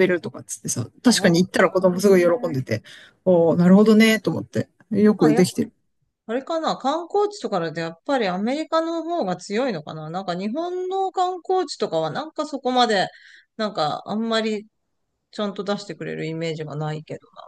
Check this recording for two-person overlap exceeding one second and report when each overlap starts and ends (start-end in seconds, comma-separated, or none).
1.1-2.6